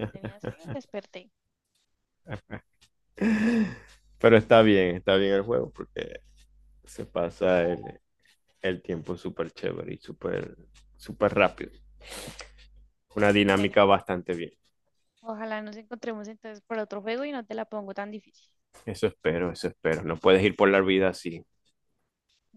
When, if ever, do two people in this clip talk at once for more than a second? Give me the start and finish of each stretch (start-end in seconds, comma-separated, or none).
none